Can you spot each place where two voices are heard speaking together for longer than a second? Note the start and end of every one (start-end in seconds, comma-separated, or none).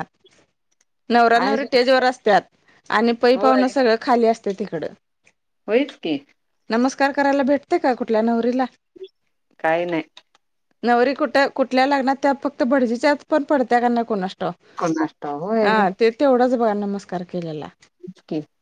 none